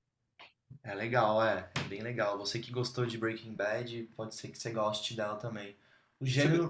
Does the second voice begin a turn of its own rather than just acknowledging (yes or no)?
no